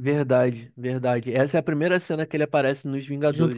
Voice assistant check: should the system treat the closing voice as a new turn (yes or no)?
yes